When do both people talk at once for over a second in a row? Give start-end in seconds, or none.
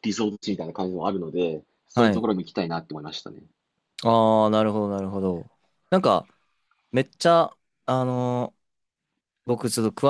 none